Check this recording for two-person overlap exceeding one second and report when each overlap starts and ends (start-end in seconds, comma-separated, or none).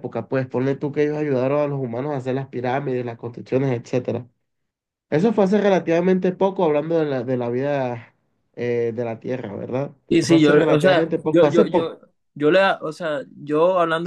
10.1-12.0